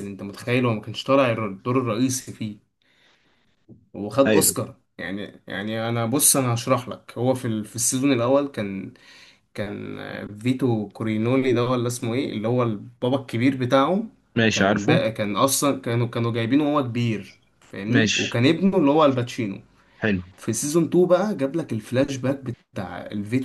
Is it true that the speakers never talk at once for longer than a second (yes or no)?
yes